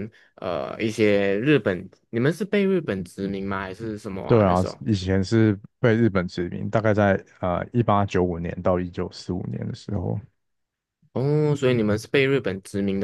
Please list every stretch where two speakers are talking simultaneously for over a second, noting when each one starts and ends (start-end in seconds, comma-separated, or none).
none